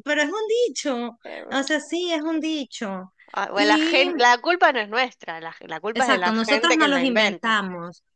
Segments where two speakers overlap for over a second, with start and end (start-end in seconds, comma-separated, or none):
5.9-7.6